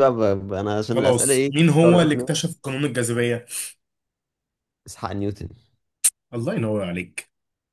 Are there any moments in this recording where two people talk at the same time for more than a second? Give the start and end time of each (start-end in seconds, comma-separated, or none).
0.9-2.4